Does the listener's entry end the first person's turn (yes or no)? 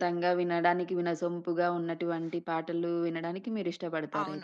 yes